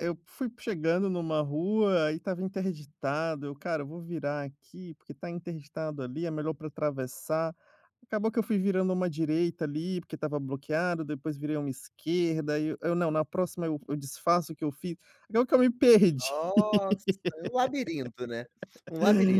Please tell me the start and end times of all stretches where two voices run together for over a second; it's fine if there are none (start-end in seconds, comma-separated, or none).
none